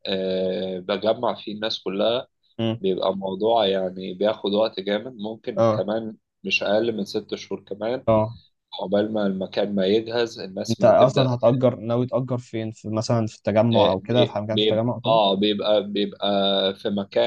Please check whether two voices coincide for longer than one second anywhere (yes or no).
yes